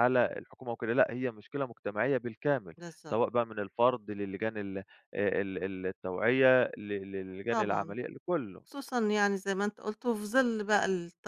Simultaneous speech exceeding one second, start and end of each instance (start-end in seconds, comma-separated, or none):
none